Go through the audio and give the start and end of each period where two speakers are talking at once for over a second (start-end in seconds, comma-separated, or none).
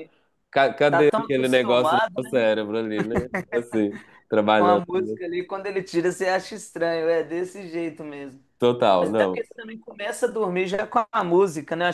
0.9-2.3